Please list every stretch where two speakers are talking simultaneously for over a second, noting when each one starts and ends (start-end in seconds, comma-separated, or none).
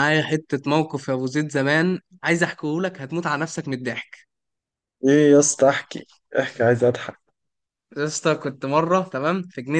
none